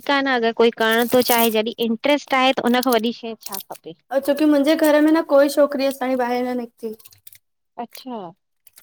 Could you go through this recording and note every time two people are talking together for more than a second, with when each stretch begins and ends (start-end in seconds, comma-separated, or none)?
none